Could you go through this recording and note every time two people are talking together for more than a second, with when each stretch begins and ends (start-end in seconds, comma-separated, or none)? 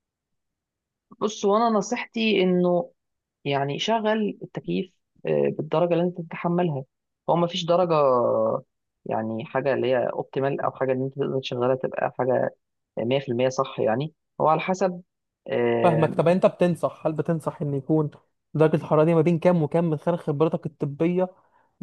none